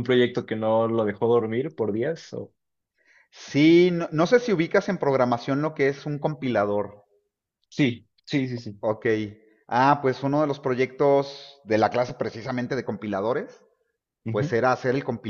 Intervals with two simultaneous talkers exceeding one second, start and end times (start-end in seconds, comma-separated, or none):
none